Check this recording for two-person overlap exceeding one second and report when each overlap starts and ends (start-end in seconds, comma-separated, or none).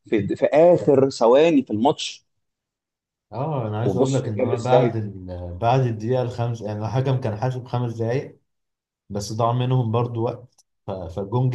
3.8-5.0